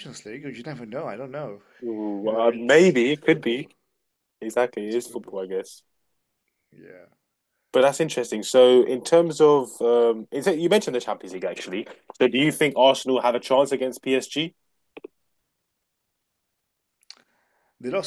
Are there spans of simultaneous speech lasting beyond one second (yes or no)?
yes